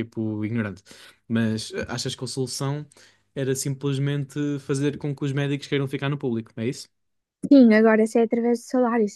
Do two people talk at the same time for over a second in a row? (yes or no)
no